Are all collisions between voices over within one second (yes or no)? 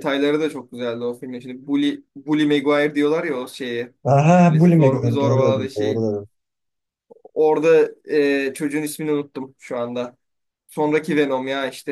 no